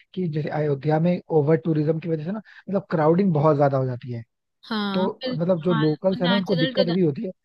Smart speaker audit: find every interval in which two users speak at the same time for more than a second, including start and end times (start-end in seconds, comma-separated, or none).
4.9-6.7